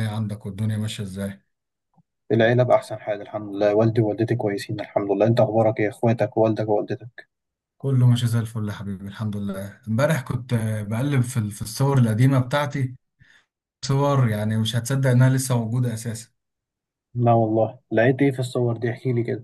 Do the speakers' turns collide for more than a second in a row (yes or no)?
no